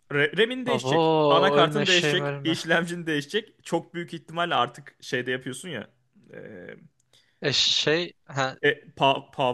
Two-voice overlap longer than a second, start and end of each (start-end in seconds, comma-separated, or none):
0.7-2.6